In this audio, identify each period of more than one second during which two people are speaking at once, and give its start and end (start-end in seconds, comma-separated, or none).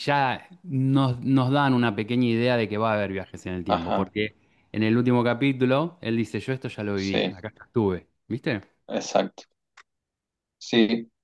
none